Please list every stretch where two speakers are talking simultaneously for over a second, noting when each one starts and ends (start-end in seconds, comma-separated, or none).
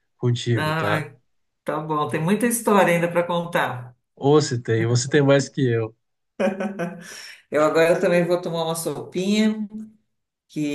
none